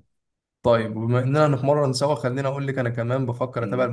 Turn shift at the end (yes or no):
no